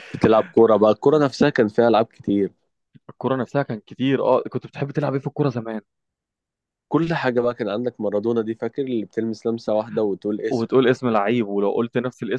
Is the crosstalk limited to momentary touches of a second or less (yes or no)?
yes